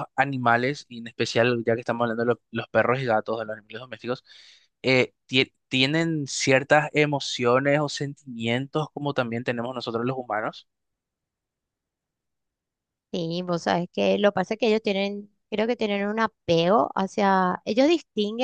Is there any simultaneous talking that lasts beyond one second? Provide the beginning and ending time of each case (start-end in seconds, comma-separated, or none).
none